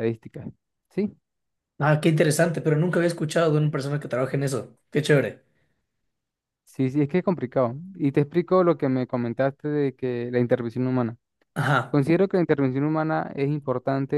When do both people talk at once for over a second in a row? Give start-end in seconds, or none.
none